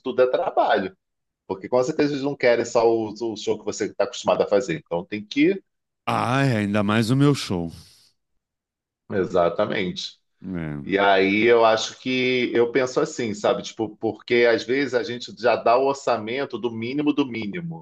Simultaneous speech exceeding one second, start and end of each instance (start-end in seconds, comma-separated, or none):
none